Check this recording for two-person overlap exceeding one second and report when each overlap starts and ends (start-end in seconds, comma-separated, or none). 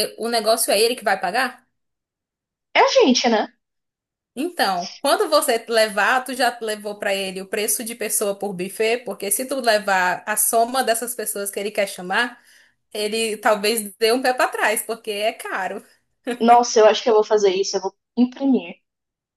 none